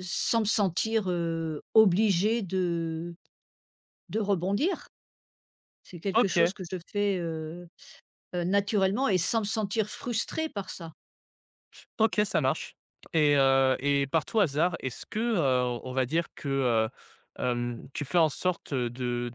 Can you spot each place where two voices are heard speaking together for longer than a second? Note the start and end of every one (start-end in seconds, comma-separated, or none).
none